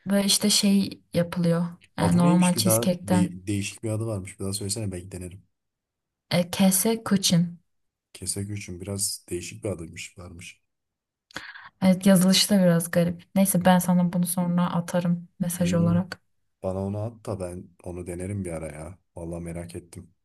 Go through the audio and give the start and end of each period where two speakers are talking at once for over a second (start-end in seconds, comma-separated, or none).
2.0-3.4